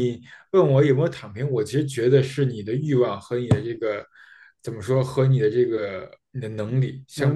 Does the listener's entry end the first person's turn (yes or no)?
yes